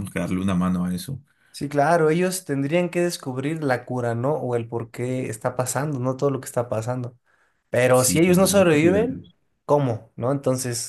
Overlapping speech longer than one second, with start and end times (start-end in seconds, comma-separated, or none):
none